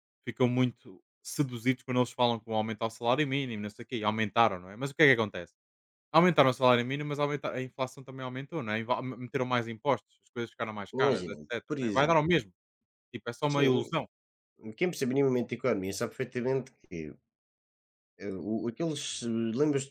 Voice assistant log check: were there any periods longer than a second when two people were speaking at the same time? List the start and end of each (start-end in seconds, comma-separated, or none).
10.9-12.2